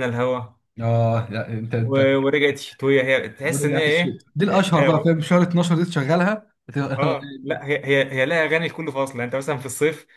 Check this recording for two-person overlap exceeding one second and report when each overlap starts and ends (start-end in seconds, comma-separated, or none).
3.5-5.1